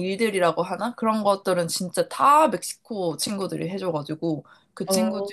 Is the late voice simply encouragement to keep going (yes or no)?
yes